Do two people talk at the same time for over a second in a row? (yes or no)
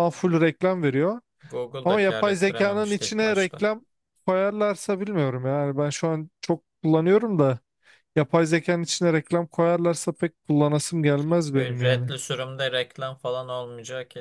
yes